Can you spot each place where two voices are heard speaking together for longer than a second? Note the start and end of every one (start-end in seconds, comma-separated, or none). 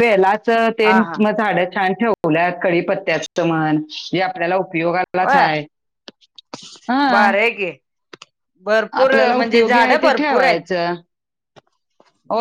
9.0-10.6